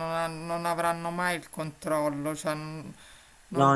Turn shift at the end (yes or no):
no